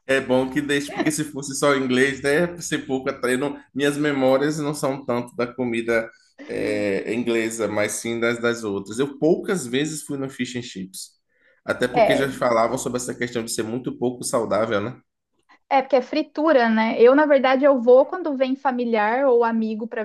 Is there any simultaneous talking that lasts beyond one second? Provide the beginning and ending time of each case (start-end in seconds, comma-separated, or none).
none